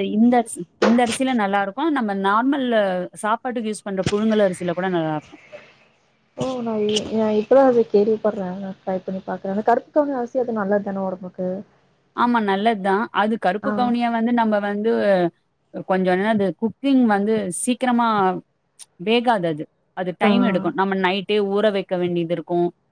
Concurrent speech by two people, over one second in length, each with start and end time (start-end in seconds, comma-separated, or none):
none